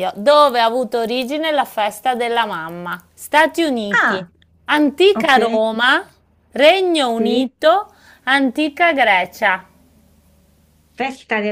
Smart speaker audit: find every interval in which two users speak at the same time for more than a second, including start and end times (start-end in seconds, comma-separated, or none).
none